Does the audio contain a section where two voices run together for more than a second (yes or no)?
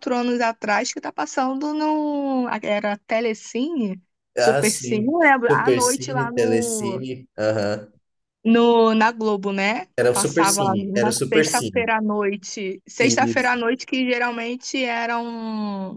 yes